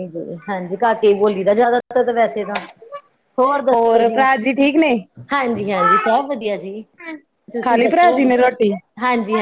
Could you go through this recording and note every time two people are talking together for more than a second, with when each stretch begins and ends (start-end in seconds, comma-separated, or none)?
none